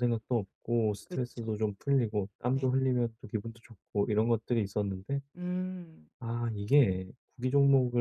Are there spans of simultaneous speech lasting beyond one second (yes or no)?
no